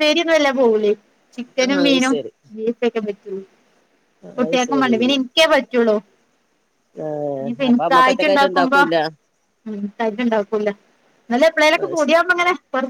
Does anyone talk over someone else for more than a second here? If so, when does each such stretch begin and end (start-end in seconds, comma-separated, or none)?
7.4-8.8